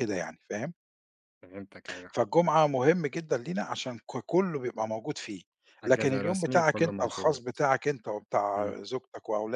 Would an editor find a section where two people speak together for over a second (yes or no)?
yes